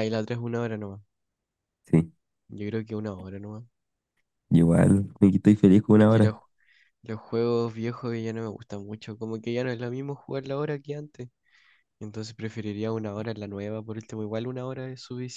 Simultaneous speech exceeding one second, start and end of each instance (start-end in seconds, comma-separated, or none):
none